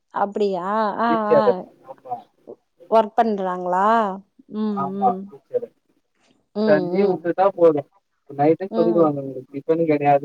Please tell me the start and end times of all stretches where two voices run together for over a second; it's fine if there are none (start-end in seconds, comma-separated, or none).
none